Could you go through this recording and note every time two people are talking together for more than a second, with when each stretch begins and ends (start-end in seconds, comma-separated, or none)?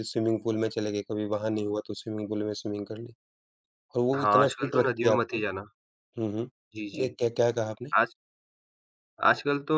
4.2-5.4